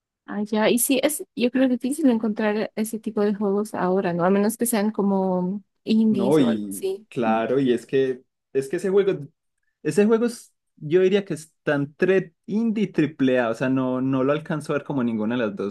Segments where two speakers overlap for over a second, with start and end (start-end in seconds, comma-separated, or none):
6.1-7.5